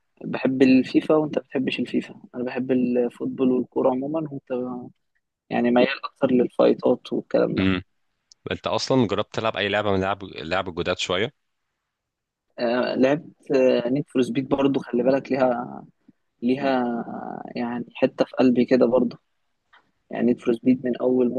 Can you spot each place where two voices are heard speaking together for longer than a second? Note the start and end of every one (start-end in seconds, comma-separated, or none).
none